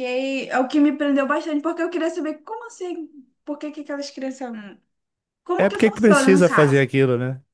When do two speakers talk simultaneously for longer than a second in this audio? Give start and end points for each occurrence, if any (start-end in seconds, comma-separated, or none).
5.6-6.9